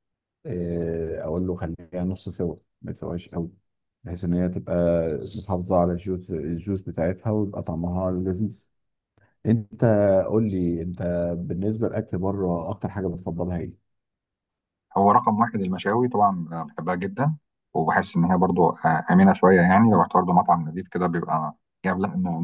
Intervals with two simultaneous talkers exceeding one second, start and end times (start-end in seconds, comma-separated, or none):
none